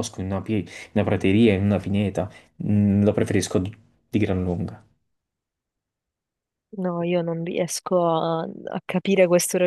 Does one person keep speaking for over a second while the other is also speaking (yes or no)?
no